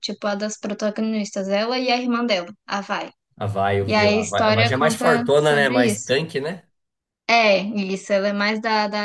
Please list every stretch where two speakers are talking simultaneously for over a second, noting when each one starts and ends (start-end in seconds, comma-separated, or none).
3.9-6.1